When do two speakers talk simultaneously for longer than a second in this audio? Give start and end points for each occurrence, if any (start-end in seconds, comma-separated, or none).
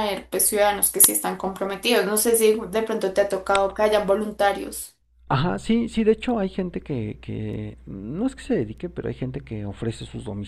none